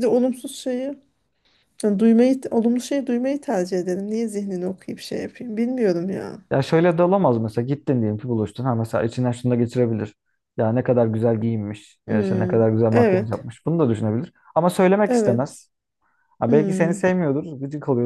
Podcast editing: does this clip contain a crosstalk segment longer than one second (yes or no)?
yes